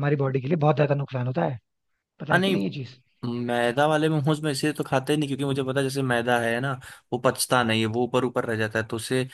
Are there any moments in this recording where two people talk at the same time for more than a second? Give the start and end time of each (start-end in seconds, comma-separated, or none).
none